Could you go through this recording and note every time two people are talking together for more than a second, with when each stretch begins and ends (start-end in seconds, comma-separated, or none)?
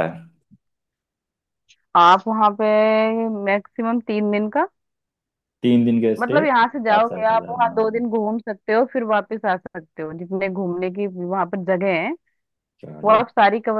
6.2-8.0